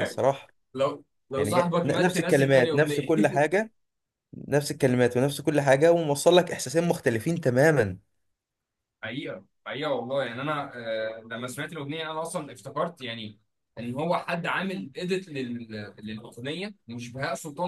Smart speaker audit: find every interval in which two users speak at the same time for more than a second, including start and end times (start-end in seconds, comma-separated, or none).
1.4-3.1